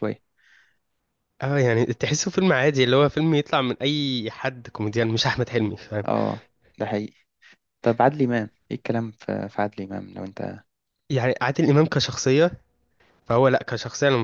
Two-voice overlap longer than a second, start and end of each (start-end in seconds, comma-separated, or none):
none